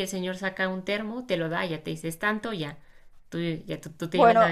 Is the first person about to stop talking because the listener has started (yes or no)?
yes